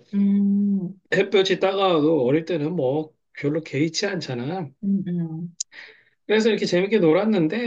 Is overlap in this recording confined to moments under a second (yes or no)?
yes